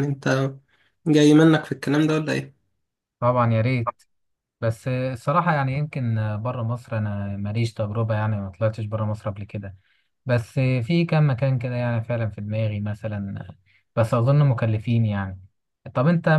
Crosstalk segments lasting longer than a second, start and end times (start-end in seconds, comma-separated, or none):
none